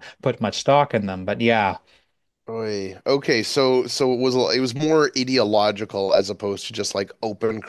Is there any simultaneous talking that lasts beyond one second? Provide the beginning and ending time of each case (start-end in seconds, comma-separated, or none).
none